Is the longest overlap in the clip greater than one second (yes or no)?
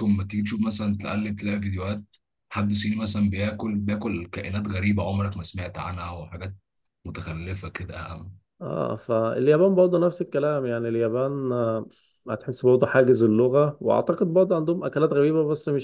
no